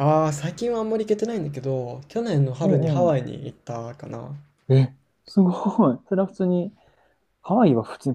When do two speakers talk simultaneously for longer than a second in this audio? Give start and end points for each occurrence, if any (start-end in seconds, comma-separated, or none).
none